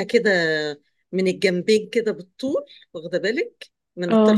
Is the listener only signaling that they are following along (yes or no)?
yes